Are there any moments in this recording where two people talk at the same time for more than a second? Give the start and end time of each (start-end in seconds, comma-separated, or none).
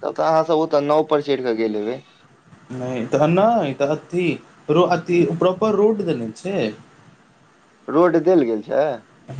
none